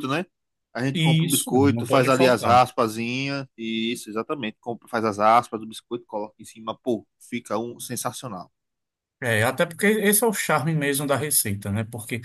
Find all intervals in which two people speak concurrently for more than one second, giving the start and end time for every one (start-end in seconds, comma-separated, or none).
0.9-2.6